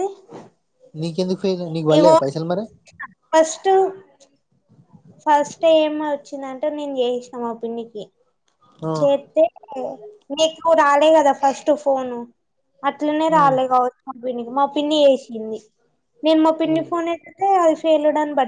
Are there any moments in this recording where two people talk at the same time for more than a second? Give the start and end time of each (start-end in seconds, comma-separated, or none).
none